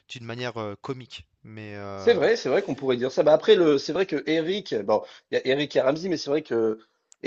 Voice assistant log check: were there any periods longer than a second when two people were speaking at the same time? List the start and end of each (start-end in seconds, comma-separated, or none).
none